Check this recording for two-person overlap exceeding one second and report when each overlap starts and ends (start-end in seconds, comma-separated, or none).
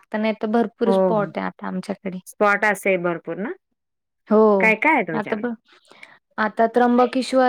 none